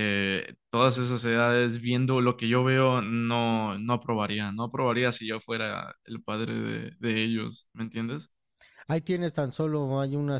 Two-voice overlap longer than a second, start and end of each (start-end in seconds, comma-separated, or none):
none